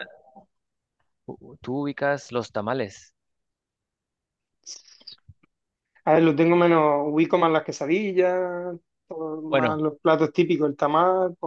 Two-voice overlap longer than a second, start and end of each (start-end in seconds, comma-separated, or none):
none